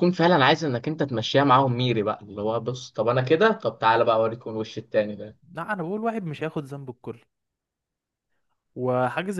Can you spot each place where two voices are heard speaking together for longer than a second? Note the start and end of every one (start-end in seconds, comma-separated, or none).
none